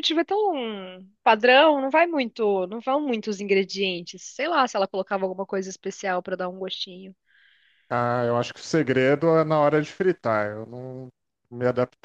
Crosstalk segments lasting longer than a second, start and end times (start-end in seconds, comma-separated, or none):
none